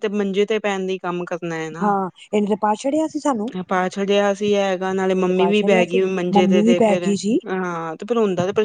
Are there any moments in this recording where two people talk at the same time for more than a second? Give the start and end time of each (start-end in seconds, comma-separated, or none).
5.1-7.0